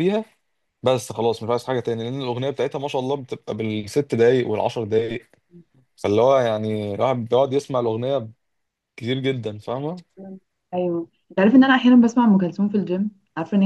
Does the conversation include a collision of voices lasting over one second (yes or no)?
no